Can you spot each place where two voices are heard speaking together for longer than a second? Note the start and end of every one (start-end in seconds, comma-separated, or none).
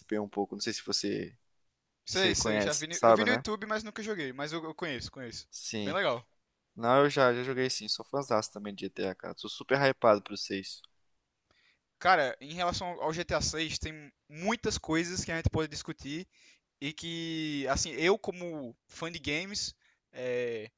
2.1-3.4